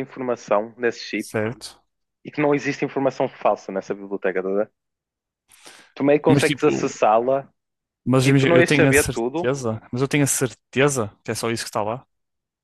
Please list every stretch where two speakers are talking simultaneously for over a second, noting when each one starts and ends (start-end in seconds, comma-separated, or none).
8.2-9.5